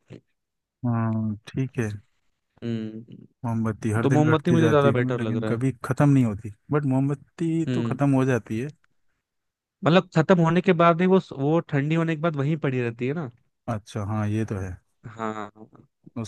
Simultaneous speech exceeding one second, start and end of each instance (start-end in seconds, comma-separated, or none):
4.0-5.6